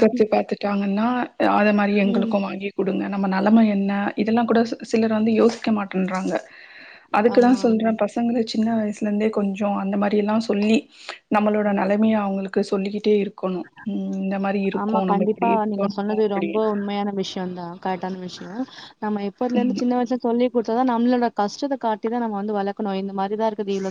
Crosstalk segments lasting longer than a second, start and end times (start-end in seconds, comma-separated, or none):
14.8-16.5